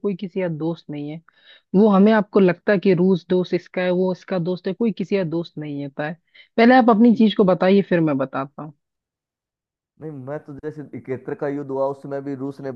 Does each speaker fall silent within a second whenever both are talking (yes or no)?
yes